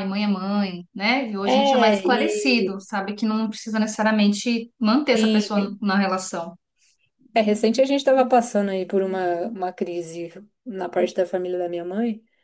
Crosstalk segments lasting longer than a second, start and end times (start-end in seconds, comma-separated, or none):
1.5-2.7